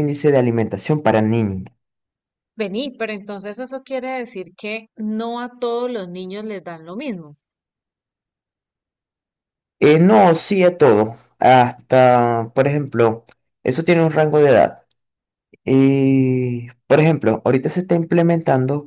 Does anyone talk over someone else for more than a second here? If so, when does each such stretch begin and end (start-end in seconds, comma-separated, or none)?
none